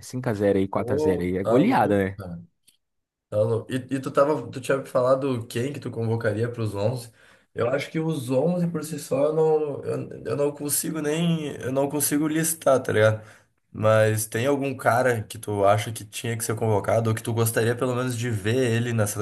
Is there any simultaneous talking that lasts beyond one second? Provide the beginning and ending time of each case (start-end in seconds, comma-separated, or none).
0.7-2.0